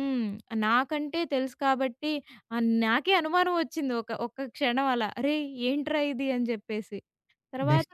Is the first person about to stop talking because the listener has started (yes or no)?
yes